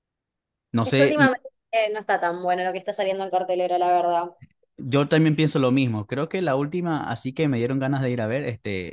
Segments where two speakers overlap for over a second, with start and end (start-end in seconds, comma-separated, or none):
none